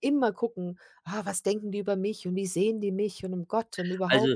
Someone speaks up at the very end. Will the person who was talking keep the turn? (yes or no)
no